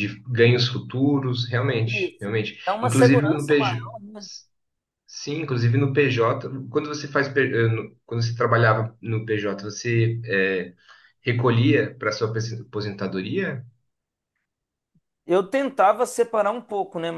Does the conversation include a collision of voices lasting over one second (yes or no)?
yes